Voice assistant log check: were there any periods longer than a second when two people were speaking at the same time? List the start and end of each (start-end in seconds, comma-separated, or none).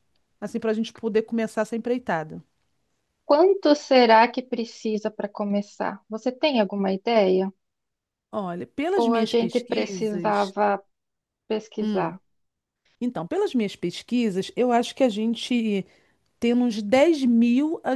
8.9-10.5